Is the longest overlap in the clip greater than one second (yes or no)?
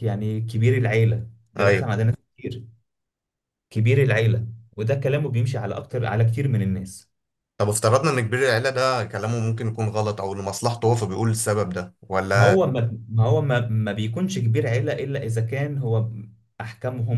no